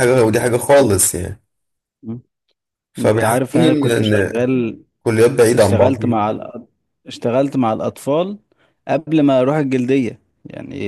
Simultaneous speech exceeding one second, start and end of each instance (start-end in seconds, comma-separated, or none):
3.0-4.5